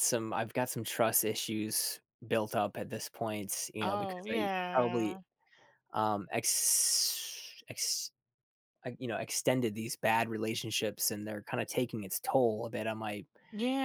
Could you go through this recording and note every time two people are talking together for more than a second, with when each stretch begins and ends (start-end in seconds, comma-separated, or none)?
3.8-5.2